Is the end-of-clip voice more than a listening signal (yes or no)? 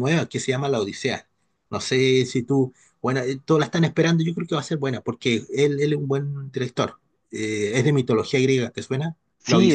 yes